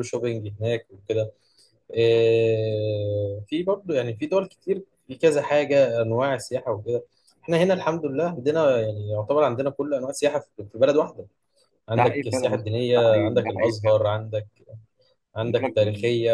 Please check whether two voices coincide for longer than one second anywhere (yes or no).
yes